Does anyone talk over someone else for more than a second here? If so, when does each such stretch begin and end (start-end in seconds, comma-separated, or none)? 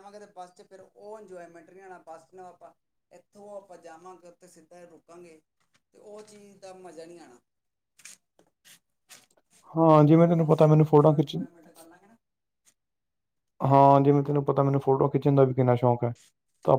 10.1-11.4